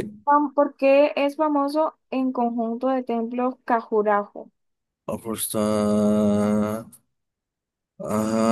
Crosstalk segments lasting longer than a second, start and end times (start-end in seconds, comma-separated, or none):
none